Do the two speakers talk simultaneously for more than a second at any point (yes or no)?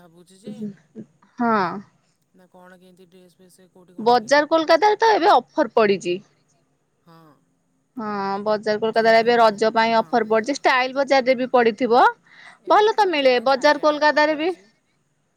yes